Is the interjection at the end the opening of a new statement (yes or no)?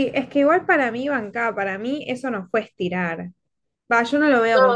no